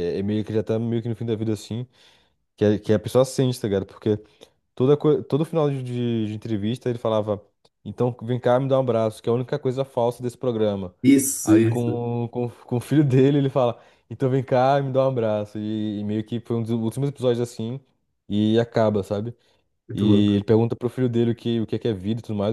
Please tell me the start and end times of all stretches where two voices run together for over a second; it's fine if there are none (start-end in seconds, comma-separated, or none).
none